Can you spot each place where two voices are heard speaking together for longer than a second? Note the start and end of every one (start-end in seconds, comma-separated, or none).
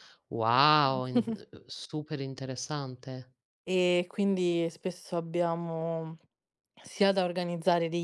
none